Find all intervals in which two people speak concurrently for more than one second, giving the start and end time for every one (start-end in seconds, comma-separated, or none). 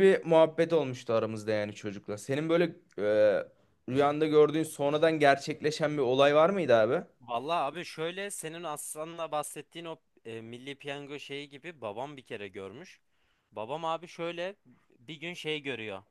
none